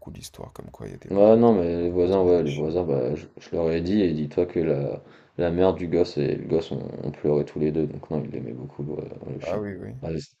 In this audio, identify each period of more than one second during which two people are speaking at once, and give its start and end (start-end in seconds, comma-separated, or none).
1.1-2.7